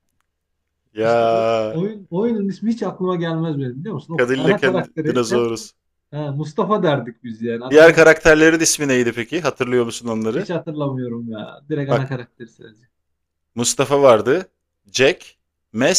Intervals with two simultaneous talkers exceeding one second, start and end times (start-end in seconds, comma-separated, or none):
4.2-5.5